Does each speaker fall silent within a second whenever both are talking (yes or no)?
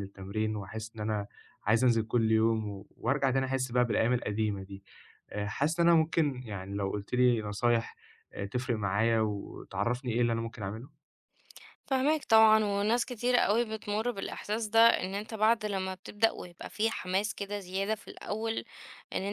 yes